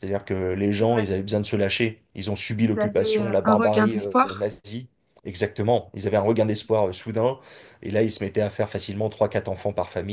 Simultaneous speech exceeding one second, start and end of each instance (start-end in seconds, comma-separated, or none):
2.6-4.5